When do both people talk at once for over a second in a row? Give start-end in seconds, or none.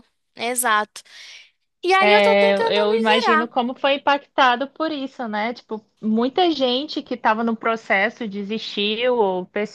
2.1-3.5